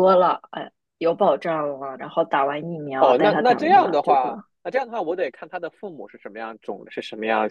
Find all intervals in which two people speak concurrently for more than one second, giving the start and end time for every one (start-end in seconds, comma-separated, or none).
3.0-4.3